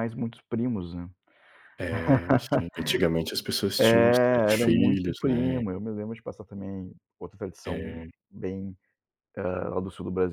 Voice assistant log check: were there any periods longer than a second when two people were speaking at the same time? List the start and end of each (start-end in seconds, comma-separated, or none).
3.8-5.6